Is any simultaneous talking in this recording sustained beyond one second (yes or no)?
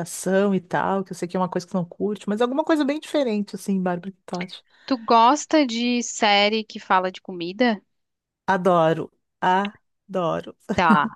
no